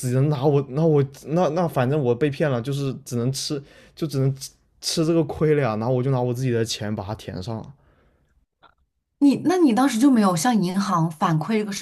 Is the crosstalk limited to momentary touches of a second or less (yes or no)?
yes